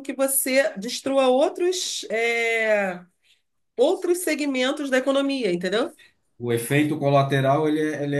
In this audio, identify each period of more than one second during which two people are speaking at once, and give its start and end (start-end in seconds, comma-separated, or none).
none